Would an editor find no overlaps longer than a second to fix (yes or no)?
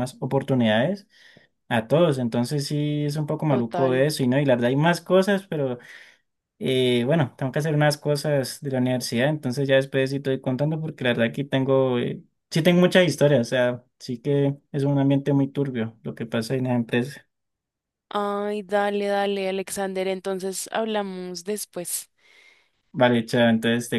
yes